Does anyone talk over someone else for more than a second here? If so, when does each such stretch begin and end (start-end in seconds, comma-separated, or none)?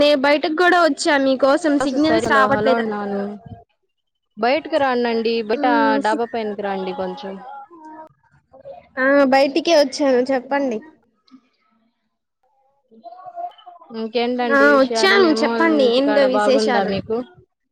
14.6-16.9